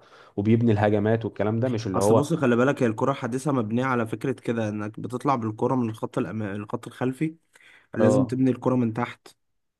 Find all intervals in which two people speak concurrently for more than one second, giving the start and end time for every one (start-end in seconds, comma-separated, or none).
none